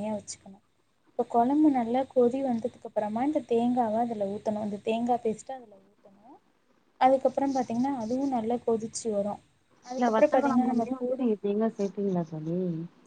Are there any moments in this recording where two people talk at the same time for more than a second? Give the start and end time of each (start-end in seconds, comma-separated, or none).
9.9-11.3